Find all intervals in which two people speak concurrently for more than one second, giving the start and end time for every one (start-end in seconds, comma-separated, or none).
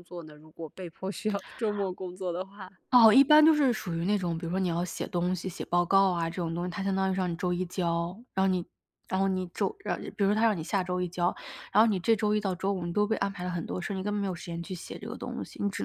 none